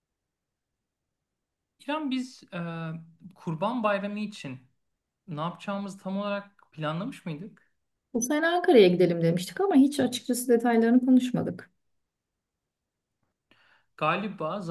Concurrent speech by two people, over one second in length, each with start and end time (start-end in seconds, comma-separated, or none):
none